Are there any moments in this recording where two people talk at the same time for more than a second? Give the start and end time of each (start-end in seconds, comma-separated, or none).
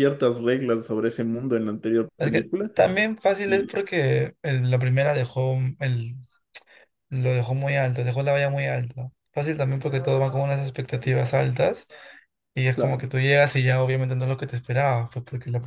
none